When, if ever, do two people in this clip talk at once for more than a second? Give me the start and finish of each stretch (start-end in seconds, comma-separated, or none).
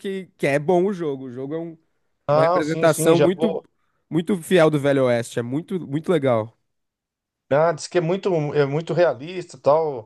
2.3-3.6